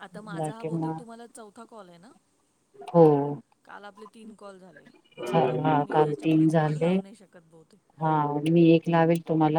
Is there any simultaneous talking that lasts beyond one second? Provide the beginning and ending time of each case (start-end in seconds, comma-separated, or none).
5.3-6.9